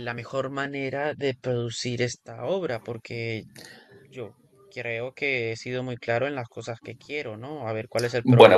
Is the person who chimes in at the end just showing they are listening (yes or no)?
no